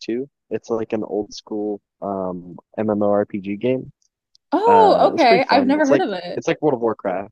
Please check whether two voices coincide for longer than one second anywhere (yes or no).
yes